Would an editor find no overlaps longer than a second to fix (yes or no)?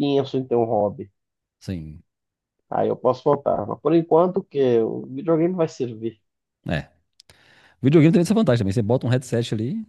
yes